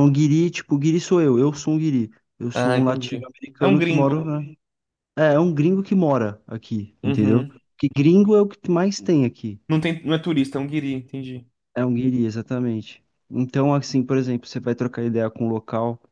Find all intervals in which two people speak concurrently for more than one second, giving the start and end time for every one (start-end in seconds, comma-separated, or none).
2.5-4.3